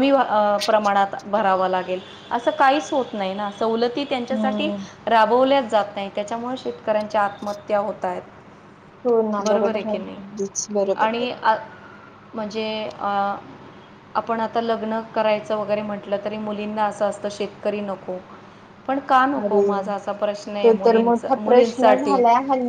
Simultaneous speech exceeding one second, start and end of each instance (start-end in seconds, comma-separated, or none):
20.6-22.2